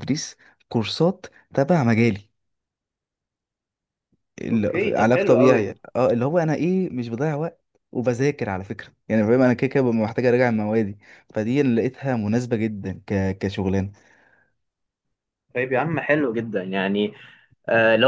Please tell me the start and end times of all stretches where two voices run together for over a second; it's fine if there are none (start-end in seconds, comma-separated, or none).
4.5-5.7